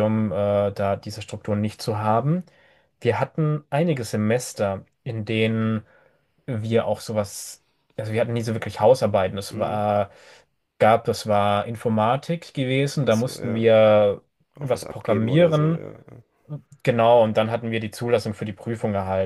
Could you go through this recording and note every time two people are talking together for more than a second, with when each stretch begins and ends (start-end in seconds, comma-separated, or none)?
14.6-15.8